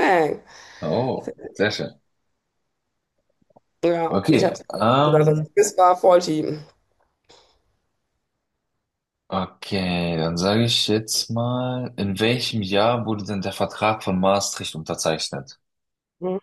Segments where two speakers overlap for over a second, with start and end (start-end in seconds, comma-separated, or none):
4.1-5.5